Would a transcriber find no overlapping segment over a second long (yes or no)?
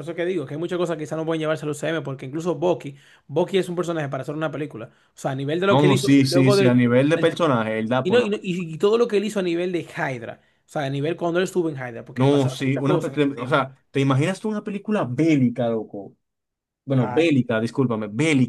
no